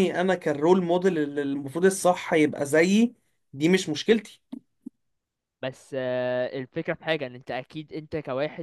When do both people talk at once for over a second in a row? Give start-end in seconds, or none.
none